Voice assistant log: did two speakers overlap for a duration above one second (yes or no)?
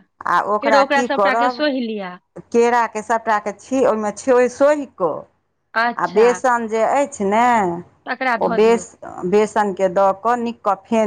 no